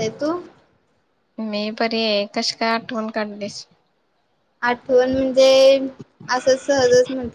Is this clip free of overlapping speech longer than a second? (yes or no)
yes